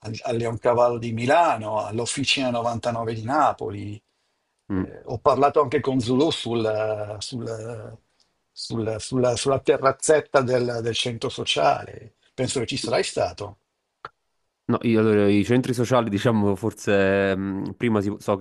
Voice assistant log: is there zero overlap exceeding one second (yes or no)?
yes